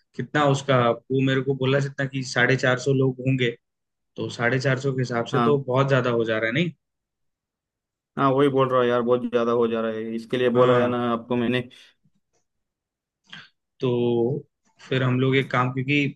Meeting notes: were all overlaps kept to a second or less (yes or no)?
yes